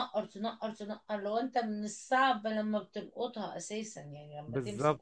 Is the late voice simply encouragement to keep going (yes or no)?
no